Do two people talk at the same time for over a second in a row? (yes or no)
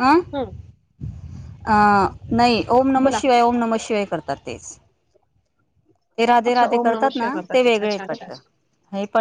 yes